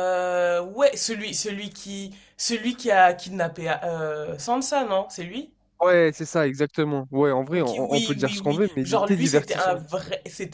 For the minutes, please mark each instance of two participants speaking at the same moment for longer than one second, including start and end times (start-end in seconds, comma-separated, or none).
7.5-9.8